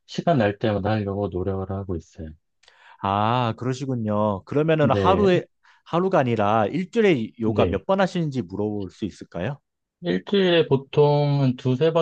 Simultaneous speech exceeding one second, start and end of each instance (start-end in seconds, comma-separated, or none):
none